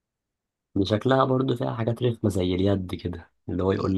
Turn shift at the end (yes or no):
no